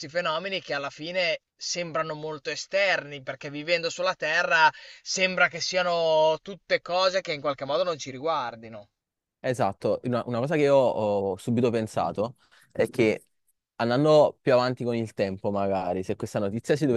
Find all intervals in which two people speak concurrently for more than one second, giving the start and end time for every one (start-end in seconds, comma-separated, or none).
none